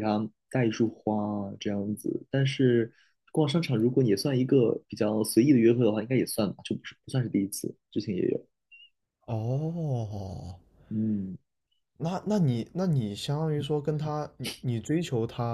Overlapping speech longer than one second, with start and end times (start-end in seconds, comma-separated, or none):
none